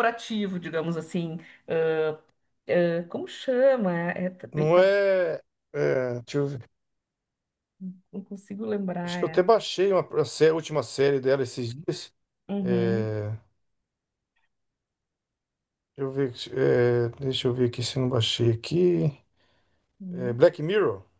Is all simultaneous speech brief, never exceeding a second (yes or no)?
yes